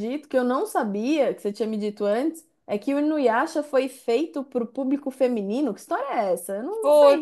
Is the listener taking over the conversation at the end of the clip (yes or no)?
yes